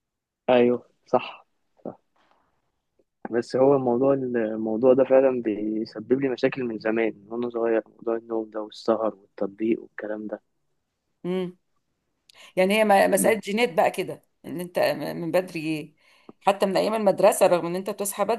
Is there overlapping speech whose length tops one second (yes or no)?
no